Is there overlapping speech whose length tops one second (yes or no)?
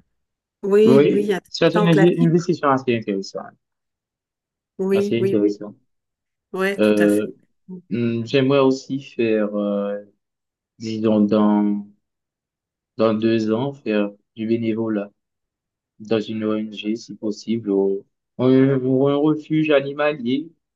yes